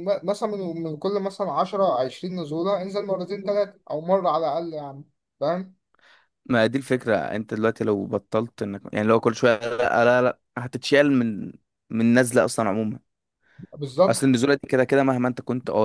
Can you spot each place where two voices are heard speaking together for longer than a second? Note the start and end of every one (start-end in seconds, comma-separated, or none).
none